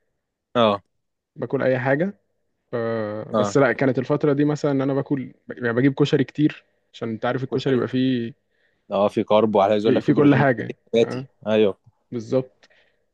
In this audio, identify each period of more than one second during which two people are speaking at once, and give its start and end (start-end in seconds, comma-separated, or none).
9.8-11.3